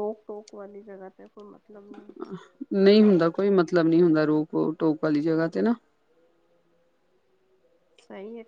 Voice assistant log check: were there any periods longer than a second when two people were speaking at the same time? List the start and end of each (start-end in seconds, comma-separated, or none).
none